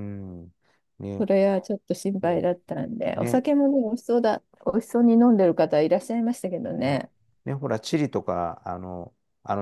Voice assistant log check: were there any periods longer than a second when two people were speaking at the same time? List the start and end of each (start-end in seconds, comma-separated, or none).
none